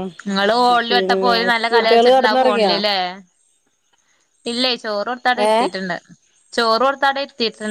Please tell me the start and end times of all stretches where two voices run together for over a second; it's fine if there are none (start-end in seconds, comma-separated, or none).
0.9-2.7